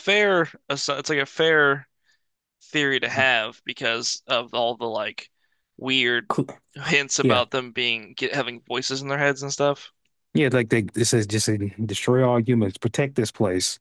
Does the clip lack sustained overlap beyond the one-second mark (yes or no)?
yes